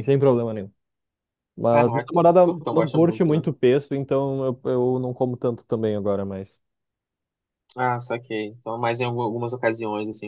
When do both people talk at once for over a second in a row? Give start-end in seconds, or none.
1.7-3.5